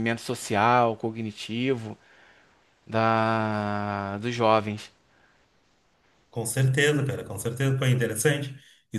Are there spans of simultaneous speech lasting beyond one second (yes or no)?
no